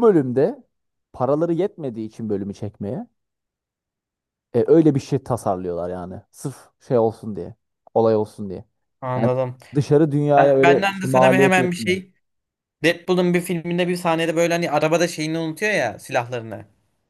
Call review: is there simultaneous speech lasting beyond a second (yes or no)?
yes